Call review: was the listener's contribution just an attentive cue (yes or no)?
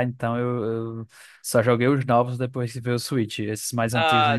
no